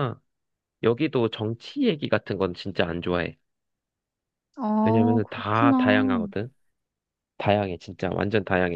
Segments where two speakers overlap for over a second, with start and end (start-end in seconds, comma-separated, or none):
4.8-6.2